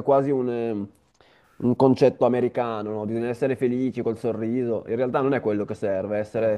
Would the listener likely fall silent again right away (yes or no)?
yes